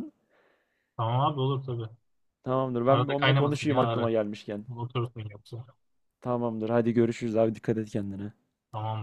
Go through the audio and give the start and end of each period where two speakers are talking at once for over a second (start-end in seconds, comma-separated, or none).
2.9-4.1